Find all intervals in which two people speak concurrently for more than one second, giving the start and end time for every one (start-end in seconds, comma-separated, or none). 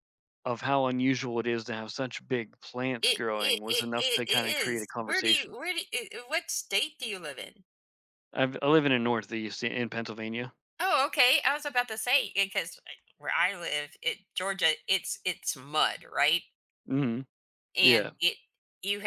3.0-5.6